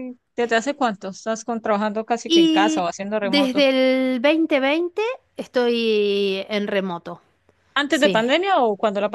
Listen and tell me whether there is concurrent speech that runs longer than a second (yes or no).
yes